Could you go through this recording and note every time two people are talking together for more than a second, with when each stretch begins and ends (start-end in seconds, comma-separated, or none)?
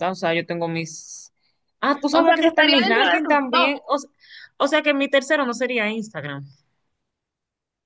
2.1-3.8